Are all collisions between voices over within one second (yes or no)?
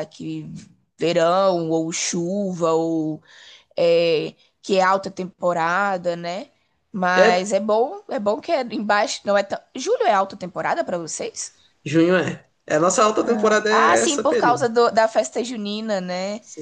no